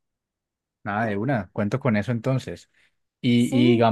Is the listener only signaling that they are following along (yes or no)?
yes